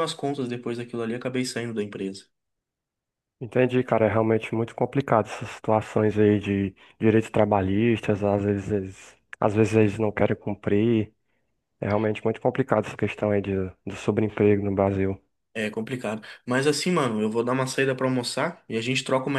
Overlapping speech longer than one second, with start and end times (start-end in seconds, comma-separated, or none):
none